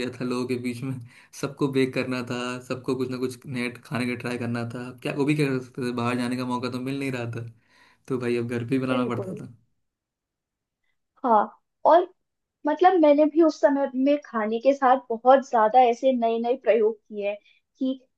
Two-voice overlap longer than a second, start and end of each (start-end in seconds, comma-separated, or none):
none